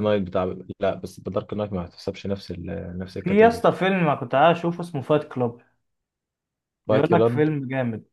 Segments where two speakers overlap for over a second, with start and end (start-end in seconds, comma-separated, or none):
none